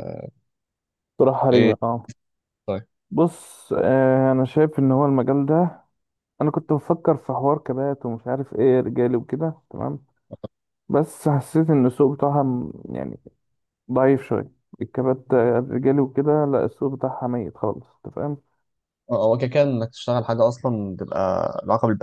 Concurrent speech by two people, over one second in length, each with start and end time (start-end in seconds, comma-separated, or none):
none